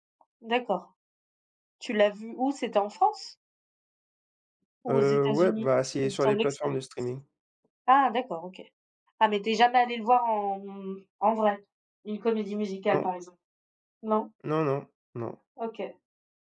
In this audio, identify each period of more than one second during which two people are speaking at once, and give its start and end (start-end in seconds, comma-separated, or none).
4.9-6.8